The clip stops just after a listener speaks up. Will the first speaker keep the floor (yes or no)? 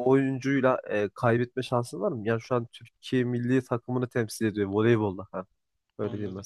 no